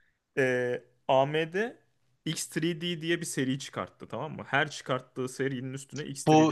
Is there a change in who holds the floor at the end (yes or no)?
yes